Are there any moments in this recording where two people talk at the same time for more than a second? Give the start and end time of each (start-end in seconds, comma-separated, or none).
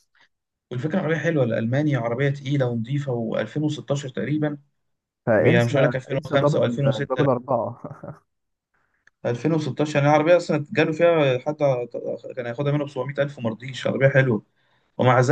5.4-7.2